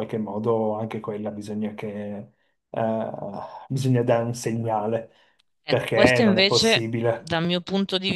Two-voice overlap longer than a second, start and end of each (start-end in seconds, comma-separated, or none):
5.7-7.4